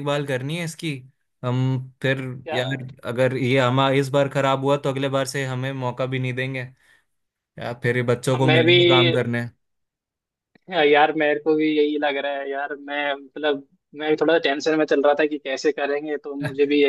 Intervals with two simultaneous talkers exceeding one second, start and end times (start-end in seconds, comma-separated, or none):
none